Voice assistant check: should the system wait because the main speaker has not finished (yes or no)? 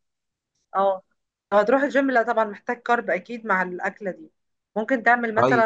yes